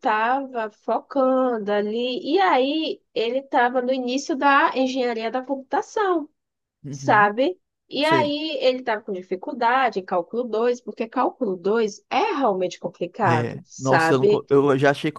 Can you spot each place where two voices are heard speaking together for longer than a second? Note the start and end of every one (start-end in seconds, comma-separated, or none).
13.2-14.4